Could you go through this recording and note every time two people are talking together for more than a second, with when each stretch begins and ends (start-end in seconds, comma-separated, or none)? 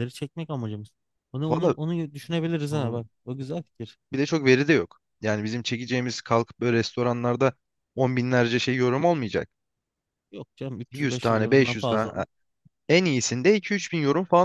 10.9-12.2